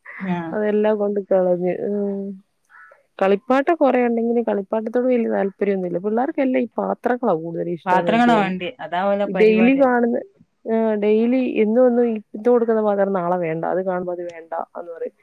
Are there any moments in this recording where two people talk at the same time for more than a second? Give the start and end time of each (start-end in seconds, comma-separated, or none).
7.9-9.8